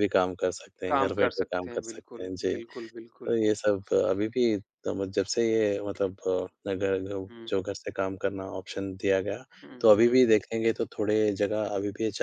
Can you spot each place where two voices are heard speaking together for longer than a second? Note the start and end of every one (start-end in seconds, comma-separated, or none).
0.9-2.5